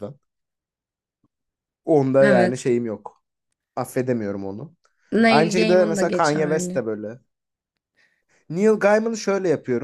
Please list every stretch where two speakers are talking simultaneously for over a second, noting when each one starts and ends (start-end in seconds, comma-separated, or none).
5.3-6.8